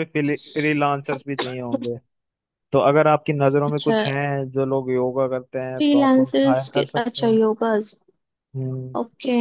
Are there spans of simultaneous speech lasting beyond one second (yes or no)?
yes